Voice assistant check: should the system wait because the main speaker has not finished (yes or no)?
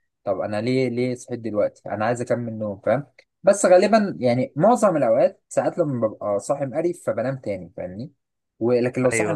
yes